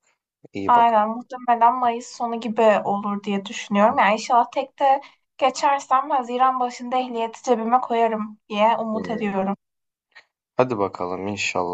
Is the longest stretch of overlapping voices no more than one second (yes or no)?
yes